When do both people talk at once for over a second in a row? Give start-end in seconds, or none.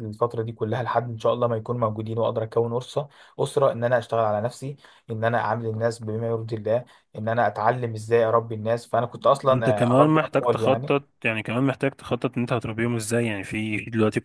9.5-10.9